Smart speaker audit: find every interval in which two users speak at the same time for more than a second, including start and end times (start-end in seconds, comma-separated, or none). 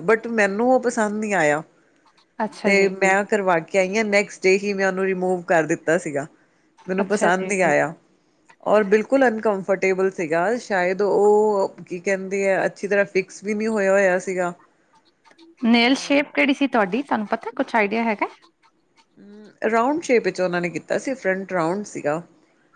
none